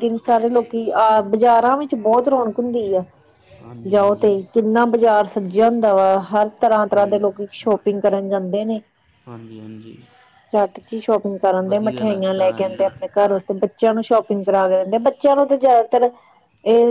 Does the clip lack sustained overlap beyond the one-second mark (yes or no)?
no